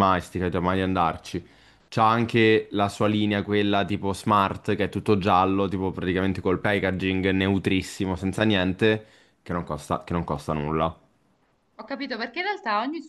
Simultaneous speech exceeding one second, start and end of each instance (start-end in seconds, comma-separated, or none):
none